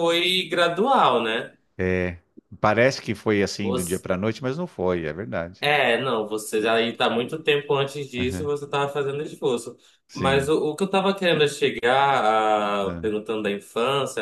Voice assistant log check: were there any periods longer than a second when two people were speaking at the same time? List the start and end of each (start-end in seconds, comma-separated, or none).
none